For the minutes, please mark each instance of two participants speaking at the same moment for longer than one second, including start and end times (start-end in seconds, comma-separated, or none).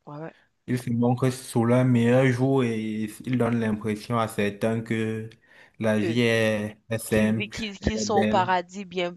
7.0-8.5